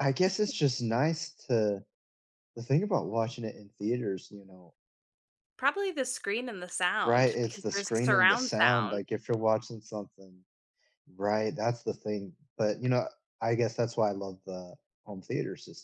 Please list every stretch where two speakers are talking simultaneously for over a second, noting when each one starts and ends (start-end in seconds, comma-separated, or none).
7.0-9.0